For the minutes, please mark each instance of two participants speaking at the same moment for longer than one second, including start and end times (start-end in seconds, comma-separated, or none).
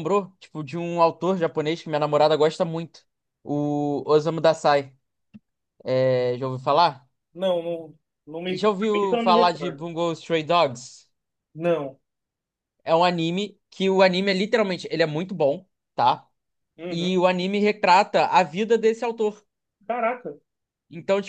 8.5-9.9